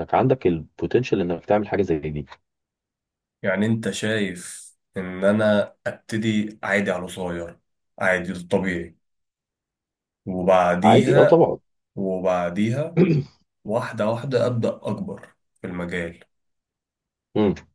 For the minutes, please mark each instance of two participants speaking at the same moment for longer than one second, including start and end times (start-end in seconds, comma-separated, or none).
none